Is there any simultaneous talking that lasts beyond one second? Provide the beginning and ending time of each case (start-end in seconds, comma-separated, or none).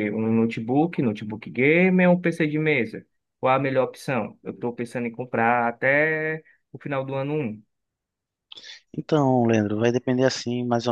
none